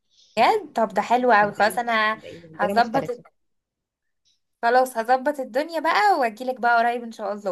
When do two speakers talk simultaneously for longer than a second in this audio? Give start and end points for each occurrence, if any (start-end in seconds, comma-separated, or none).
1.4-3.1